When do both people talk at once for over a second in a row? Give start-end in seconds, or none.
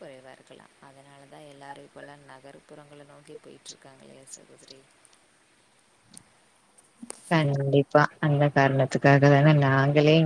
none